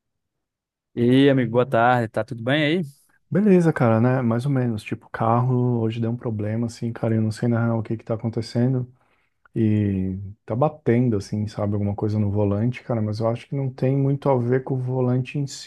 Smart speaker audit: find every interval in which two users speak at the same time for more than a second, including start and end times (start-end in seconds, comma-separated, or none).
none